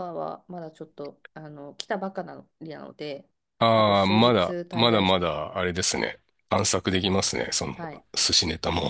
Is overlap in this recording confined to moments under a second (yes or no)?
no